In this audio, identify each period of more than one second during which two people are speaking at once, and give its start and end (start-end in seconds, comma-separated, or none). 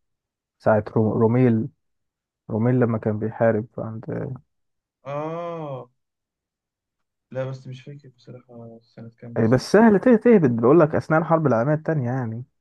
none